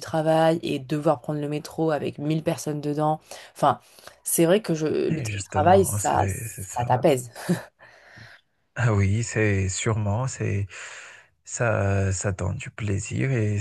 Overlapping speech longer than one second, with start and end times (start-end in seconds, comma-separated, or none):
5.1-6.9